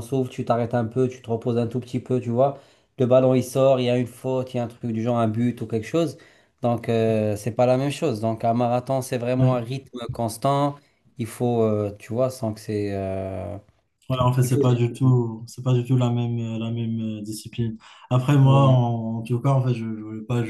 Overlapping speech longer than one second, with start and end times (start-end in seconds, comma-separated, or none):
none